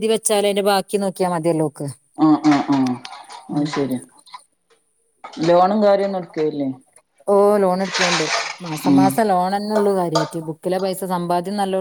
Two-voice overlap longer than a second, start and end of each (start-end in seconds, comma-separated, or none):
none